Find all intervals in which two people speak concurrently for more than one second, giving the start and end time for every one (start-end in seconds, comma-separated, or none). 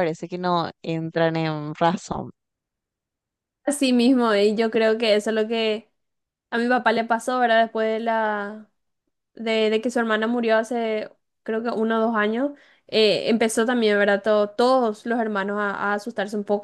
none